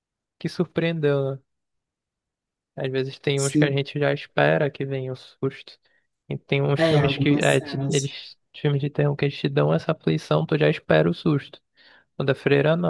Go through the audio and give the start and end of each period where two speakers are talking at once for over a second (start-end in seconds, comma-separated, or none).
6.8-8.1